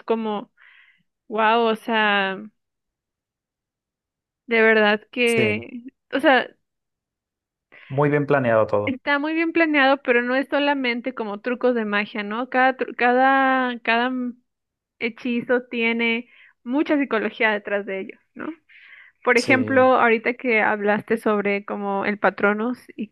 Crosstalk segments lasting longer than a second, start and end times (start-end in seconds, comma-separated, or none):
none